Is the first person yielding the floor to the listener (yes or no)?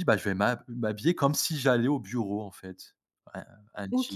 yes